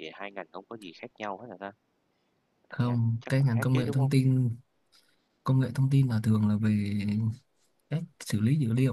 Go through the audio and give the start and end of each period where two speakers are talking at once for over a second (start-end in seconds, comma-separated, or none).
2.7-4.1